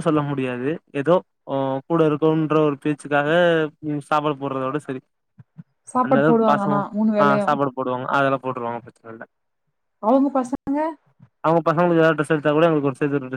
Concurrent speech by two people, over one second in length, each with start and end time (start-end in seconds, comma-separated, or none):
none